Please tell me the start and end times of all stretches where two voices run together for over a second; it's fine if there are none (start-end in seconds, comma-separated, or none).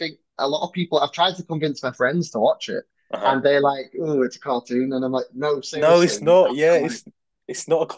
5.7-7.0